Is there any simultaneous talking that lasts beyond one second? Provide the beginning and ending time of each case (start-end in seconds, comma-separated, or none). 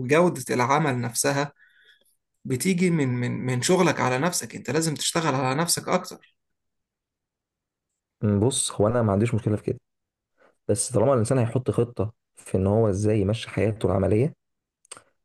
none